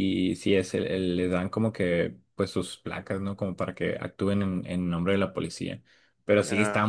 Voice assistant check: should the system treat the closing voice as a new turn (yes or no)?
no